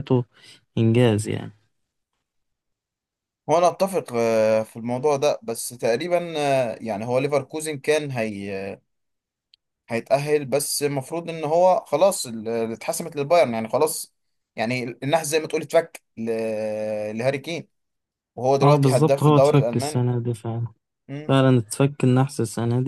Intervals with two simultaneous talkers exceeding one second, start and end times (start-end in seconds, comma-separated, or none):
18.6-20.1